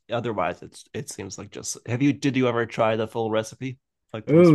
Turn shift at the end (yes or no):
yes